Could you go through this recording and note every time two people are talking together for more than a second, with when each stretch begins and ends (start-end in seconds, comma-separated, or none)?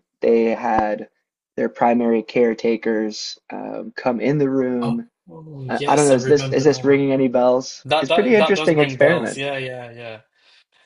5.7-7.0, 7.8-9.4